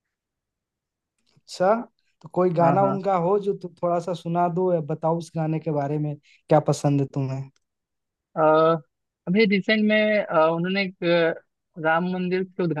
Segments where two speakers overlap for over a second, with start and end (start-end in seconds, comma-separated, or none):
none